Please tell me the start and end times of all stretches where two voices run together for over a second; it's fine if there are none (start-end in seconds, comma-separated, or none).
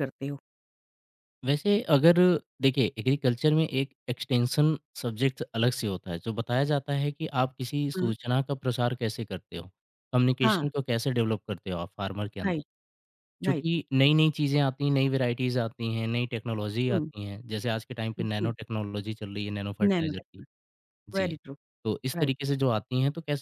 none